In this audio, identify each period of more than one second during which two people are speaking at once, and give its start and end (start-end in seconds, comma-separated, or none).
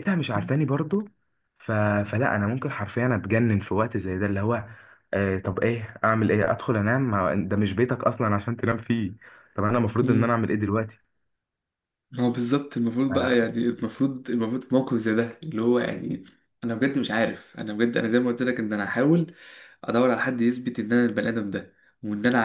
none